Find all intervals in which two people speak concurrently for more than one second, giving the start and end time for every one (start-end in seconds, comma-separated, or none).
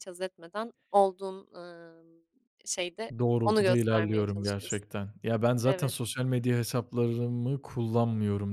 3.2-4.8